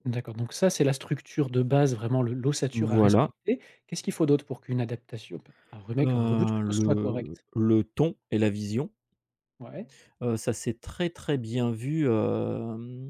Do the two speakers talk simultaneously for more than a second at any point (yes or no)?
yes